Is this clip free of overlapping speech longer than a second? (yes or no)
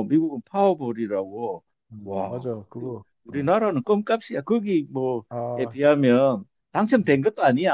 yes